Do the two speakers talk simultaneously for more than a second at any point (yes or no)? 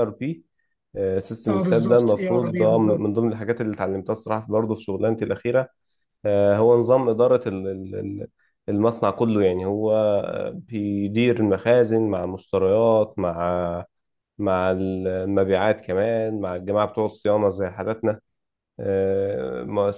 yes